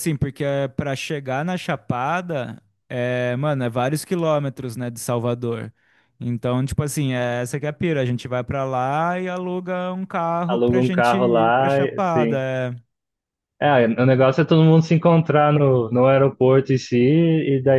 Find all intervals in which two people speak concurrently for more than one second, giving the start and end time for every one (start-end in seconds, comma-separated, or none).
10.5-12.4